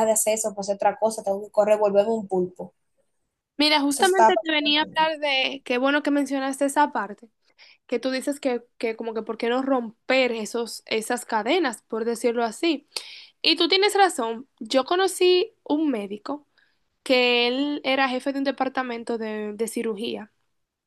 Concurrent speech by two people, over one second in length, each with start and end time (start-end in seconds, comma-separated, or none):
3.9-5.1